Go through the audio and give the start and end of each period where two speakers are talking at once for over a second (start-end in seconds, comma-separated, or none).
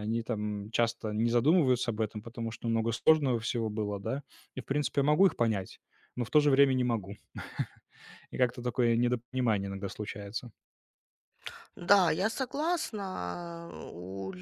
none